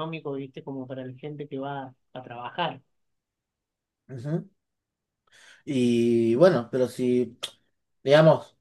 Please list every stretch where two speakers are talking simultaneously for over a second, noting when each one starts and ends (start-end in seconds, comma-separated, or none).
none